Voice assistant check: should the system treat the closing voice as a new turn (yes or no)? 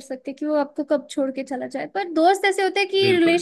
no